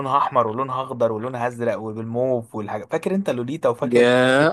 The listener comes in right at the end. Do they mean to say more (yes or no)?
yes